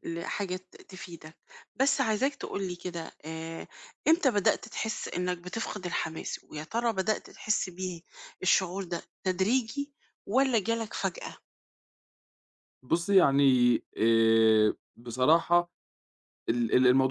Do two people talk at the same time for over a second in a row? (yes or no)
no